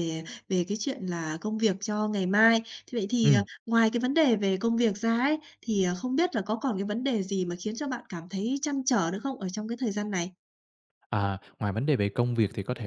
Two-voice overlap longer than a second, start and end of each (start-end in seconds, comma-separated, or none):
none